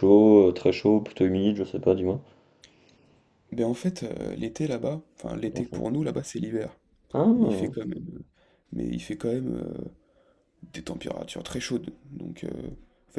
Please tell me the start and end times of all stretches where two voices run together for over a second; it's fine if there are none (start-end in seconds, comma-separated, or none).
none